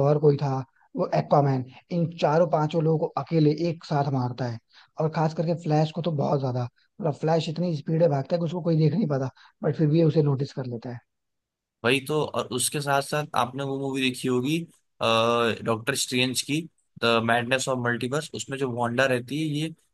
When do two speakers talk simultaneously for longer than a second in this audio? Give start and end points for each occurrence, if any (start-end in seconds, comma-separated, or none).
none